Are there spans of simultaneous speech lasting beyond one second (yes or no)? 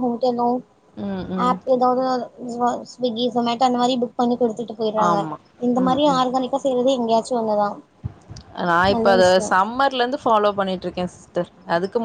no